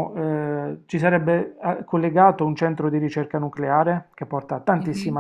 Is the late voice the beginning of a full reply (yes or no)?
no